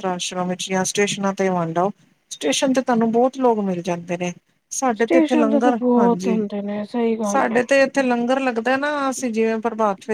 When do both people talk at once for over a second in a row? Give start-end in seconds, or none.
5.0-6.4